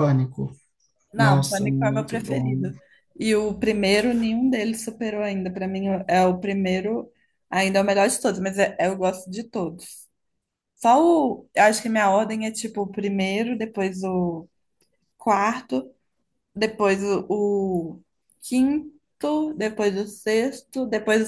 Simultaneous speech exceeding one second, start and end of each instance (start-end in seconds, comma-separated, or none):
1.2-2.7